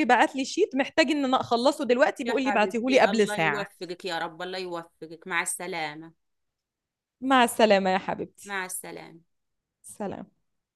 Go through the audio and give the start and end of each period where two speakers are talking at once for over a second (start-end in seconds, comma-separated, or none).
2.2-3.7